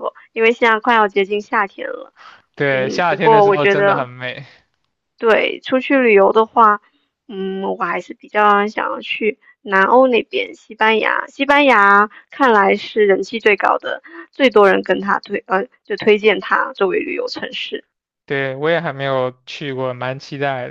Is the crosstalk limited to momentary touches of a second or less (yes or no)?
no